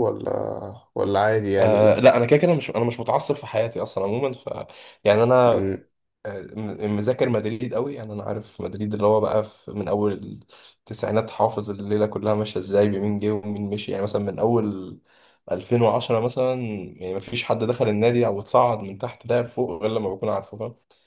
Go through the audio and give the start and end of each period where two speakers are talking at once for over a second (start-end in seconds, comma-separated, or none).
none